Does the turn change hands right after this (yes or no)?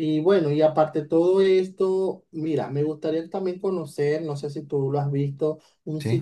no